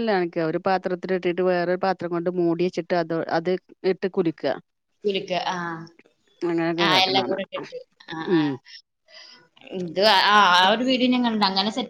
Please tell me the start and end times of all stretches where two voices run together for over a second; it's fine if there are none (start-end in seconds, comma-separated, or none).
none